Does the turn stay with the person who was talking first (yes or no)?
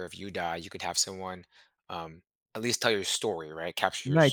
no